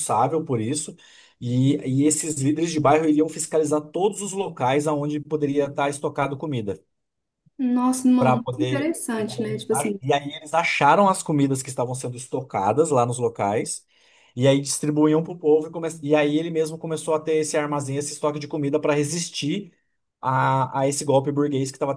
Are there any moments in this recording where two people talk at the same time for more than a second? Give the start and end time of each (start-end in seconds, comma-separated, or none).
8.2-10.0